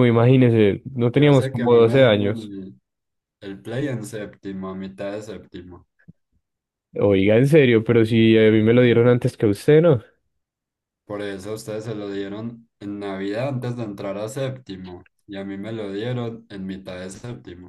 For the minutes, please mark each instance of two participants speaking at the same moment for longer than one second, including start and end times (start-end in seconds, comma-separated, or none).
1.2-2.5